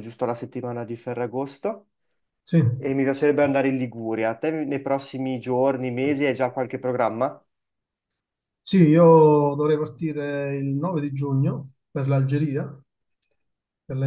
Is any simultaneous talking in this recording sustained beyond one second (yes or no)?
no